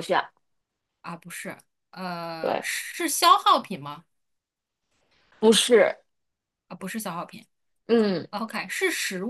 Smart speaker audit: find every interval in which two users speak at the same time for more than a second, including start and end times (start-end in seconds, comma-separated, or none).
none